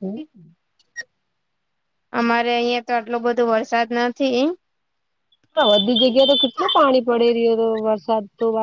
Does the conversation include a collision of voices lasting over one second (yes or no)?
no